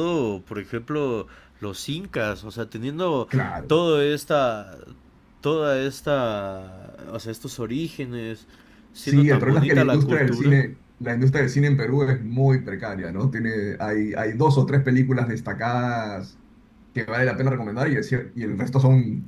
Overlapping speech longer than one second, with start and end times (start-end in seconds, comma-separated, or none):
9.0-10.6